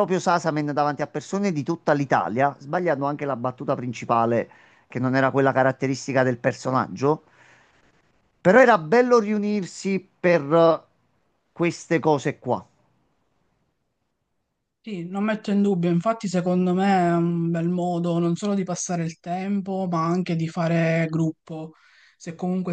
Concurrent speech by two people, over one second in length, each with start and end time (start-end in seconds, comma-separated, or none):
none